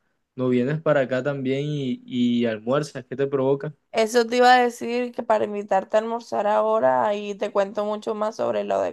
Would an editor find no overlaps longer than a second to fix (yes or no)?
yes